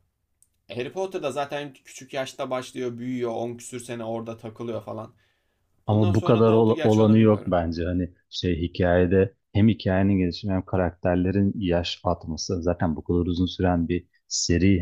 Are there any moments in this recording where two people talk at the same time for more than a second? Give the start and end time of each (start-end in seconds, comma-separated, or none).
5.9-7.6